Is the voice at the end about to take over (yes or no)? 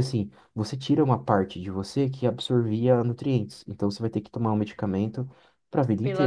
yes